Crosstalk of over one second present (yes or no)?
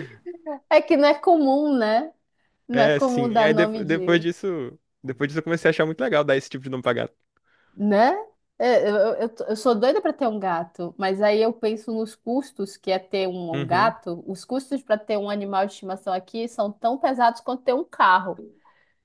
yes